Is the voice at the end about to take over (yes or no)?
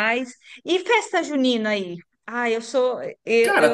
no